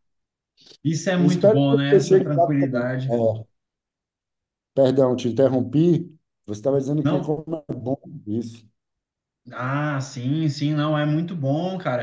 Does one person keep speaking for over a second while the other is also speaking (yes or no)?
yes